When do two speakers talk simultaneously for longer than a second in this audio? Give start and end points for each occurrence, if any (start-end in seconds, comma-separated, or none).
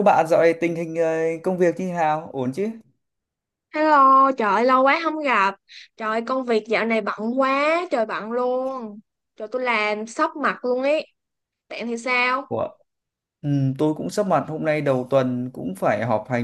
none